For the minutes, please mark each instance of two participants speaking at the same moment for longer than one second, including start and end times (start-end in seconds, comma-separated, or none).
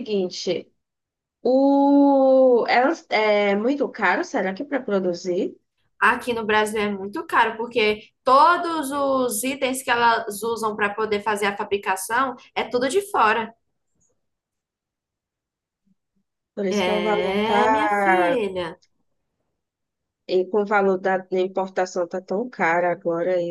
16.7-18.4